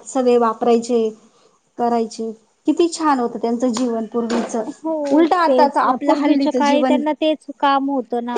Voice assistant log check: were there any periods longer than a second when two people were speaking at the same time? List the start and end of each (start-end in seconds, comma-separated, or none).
5.1-7.0